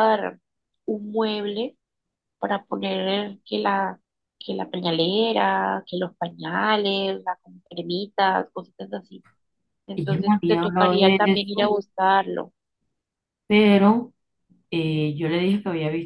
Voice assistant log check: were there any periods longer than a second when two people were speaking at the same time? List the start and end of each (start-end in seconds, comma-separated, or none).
9.9-11.8